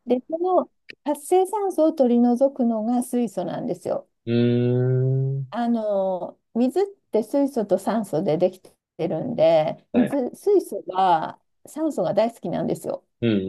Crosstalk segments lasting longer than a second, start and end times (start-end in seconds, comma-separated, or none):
none